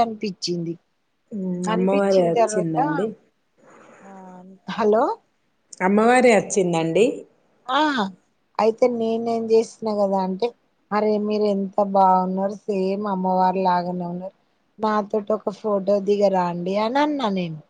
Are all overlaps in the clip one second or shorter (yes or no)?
no